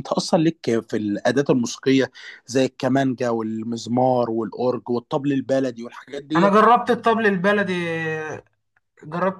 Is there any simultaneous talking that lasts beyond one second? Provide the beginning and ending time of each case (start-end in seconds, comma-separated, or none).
none